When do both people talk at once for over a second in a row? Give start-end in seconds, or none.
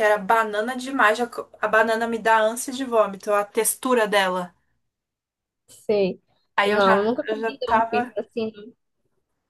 6.7-8.1